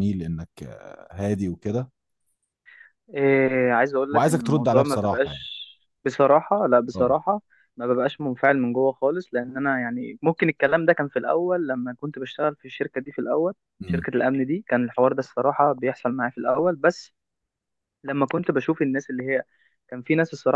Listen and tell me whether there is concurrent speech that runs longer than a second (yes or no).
yes